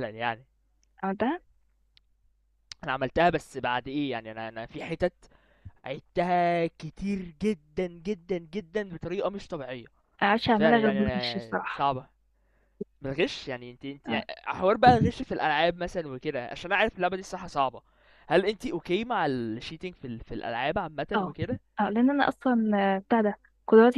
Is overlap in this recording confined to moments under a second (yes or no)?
no